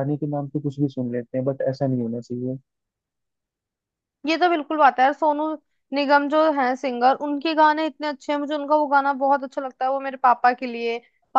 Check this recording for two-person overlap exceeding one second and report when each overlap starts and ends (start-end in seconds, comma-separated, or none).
none